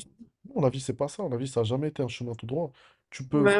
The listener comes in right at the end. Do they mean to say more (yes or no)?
no